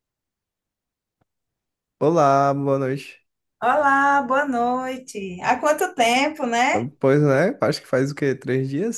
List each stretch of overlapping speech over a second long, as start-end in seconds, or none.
none